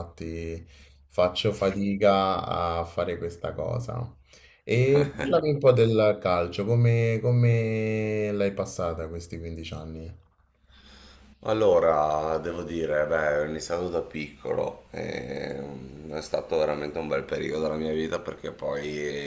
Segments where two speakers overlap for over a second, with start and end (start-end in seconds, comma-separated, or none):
none